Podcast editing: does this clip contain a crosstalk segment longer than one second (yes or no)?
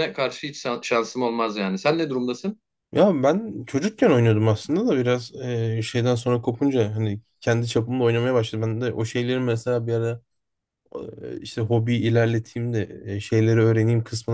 no